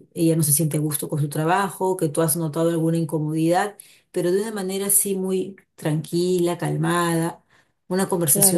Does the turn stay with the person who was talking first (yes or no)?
no